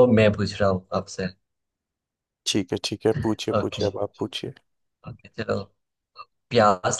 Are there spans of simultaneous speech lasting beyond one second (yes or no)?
no